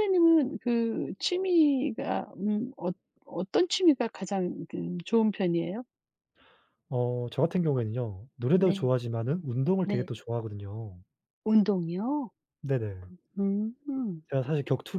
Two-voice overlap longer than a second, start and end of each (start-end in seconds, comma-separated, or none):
none